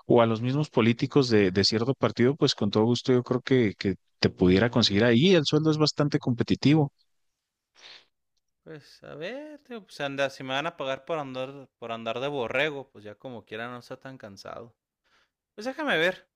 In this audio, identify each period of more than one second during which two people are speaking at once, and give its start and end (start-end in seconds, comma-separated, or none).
none